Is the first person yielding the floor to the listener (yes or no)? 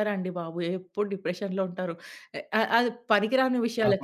yes